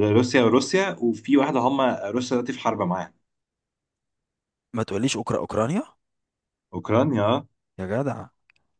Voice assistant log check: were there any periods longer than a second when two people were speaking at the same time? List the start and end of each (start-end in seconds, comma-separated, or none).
none